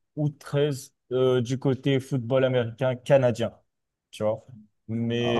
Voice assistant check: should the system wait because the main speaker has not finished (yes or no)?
yes